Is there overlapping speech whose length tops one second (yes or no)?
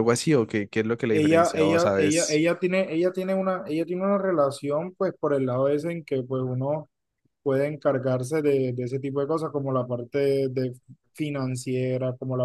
yes